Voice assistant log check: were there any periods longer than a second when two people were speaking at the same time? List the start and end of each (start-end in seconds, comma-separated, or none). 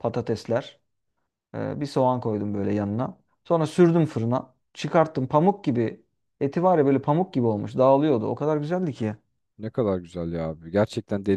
none